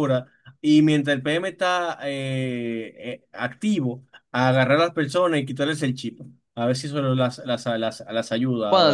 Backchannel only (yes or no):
no